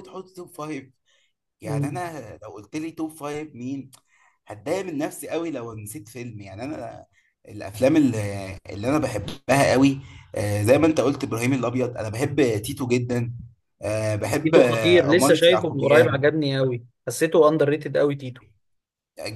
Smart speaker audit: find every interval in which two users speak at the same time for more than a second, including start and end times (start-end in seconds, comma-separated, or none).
14.4-16.2